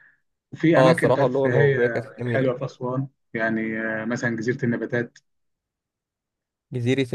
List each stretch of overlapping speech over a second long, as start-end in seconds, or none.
0.8-2.5